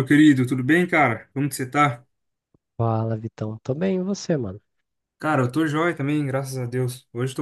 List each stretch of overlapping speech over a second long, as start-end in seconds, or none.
none